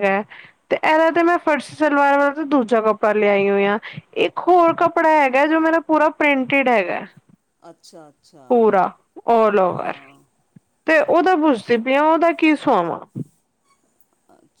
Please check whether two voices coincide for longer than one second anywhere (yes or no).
no